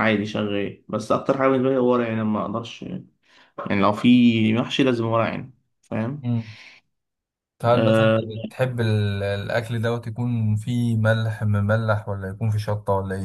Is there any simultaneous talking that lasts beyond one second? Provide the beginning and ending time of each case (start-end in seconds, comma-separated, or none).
none